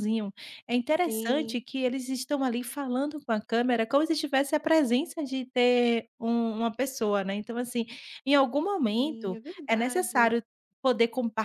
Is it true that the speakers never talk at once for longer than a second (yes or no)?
no